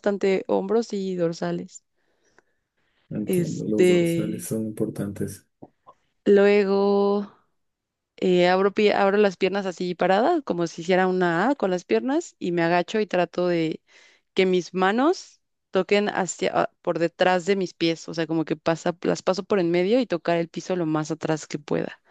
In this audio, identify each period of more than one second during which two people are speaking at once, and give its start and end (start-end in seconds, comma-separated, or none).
3.3-4.5